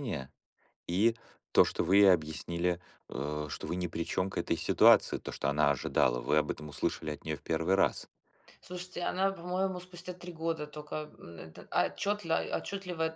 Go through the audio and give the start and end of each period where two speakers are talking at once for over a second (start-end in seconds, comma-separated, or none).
none